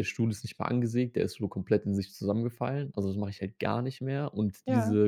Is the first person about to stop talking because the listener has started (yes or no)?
no